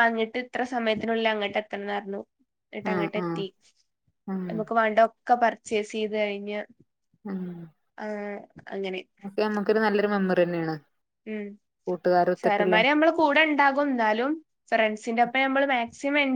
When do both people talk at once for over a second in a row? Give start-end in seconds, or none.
none